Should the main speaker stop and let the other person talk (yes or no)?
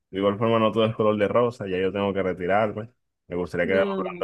no